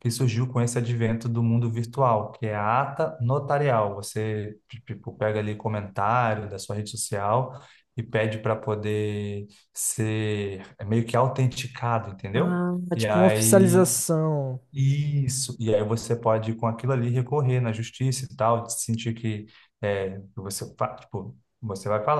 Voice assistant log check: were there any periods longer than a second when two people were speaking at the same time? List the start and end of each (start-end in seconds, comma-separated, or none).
12.3-13.9